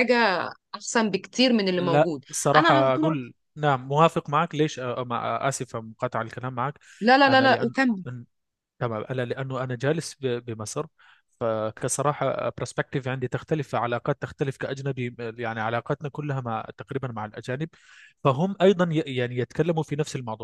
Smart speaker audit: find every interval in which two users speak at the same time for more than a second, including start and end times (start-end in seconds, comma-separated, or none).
1.8-3.2